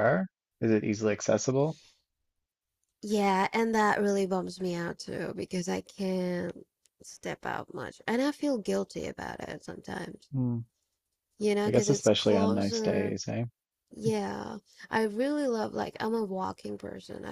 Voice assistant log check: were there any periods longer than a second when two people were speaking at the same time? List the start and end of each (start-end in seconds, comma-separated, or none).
11.7-13.1